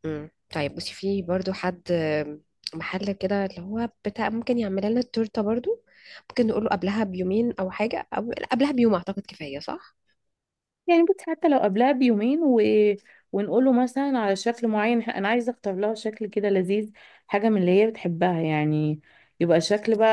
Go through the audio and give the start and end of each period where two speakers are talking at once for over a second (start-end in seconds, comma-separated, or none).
none